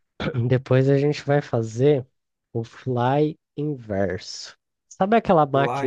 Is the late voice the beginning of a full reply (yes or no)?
no